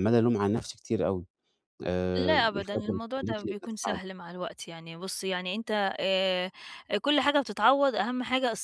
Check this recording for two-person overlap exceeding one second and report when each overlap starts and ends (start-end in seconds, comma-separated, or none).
2.3-4.2